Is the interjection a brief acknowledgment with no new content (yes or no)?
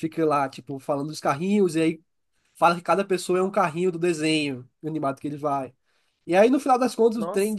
yes